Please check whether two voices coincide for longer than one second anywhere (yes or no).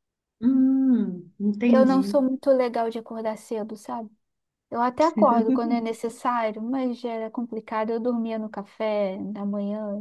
no